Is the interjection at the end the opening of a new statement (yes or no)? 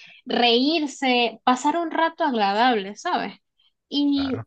no